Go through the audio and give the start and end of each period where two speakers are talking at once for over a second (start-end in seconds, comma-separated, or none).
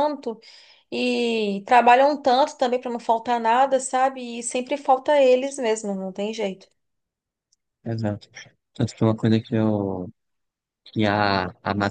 none